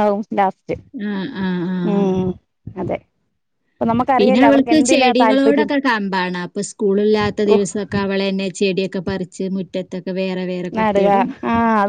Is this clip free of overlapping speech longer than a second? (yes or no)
no